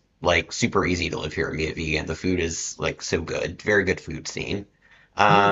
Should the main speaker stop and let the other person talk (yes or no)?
yes